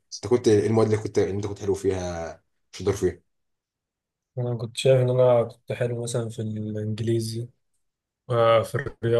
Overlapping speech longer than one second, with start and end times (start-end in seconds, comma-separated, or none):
none